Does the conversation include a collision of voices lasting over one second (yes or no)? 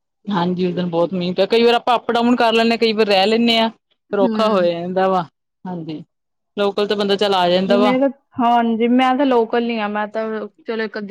no